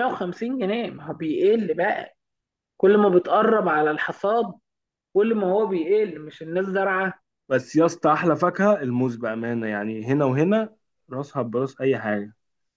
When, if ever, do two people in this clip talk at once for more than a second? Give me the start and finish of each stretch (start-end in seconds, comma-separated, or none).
none